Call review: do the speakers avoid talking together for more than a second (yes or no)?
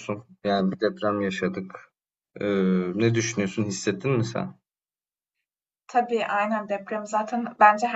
yes